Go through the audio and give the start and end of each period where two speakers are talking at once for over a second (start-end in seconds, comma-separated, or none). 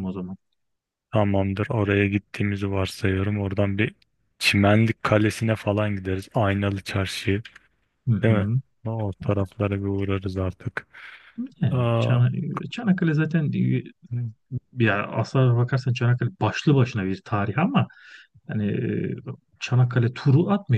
none